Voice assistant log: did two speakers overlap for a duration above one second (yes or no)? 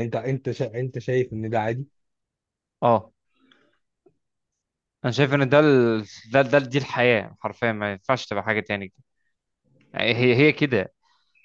no